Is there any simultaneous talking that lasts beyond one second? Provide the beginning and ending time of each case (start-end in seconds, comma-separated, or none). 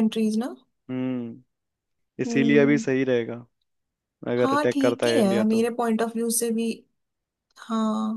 4.4-5.7